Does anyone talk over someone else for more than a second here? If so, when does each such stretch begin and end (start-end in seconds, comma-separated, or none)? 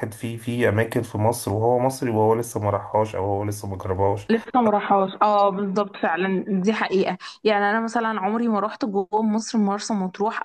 none